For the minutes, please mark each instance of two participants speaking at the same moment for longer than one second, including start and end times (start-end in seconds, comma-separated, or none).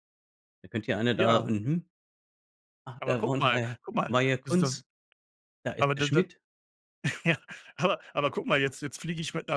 3.0-4.8